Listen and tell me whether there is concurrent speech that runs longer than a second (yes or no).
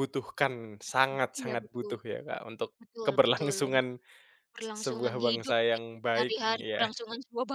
yes